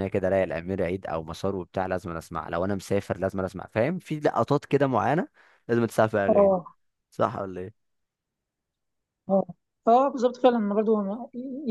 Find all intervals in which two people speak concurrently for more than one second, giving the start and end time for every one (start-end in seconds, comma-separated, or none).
none